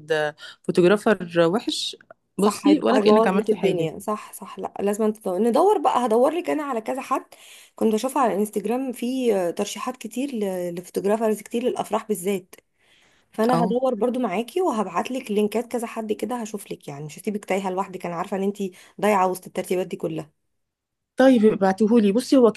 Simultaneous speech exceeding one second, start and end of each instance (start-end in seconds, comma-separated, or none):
2.4-3.9